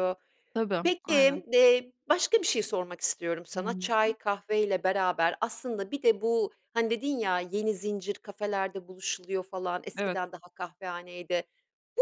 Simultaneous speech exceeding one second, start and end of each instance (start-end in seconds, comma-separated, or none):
none